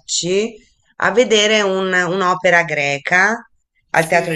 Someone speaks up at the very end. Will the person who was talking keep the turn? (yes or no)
yes